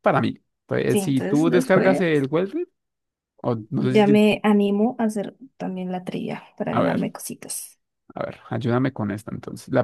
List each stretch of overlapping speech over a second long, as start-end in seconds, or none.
0.9-2.2